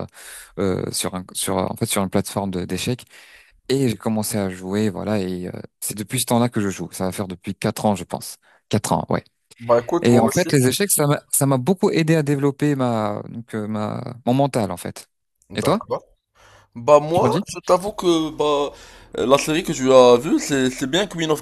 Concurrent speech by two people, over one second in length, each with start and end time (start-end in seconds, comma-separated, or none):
none